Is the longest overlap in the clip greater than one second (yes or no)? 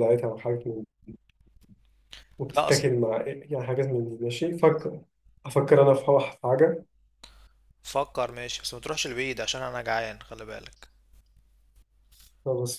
no